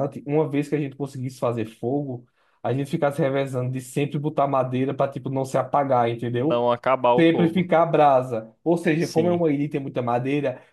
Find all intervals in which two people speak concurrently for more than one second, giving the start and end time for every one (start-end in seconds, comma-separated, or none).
none